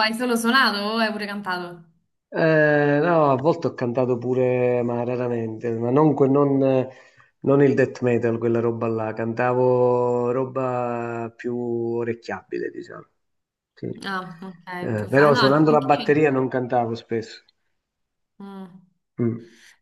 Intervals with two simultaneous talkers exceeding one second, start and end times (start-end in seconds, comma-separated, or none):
14.0-16.2